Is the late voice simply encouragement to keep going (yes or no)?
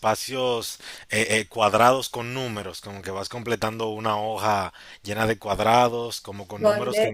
no